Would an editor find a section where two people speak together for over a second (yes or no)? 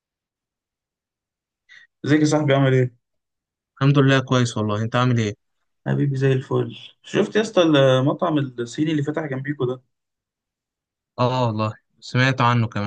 no